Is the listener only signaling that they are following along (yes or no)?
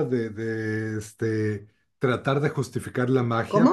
yes